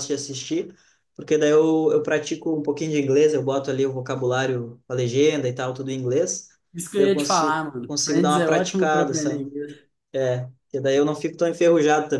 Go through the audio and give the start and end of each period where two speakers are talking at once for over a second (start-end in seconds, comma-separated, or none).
7.0-9.5